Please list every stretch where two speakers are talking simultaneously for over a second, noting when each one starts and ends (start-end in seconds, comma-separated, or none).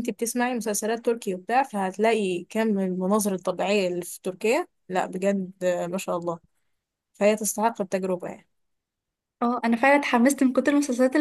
none